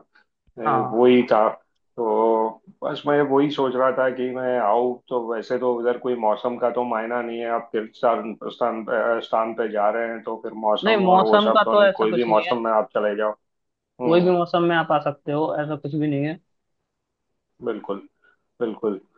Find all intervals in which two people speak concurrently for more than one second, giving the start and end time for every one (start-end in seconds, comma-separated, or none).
10.8-12.6